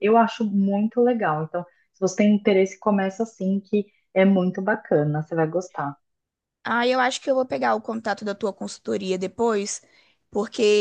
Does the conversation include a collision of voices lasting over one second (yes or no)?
no